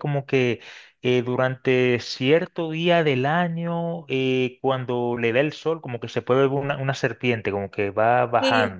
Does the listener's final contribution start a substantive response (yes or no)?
yes